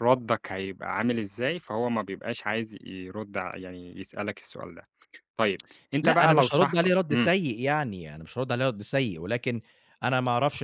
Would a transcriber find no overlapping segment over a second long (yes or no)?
no